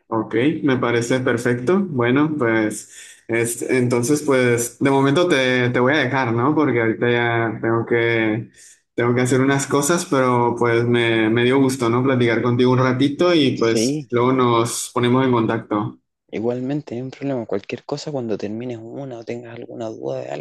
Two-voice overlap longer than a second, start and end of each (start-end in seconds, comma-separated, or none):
none